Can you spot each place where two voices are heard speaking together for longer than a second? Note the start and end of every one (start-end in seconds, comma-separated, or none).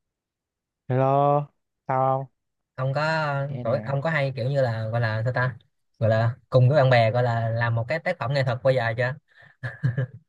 none